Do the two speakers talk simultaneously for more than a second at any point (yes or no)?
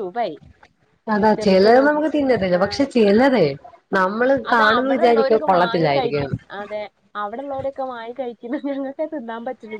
yes